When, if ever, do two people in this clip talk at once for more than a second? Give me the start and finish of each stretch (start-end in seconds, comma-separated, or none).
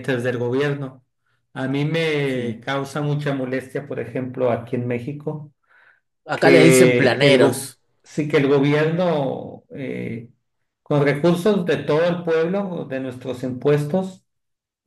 6.3-7.8